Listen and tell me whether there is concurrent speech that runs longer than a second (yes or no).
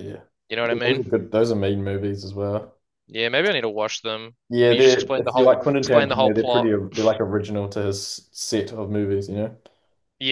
yes